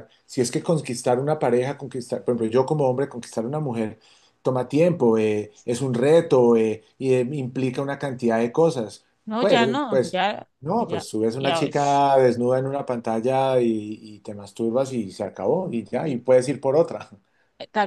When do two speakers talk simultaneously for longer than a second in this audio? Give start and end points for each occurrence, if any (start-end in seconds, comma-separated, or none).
9.2-12.1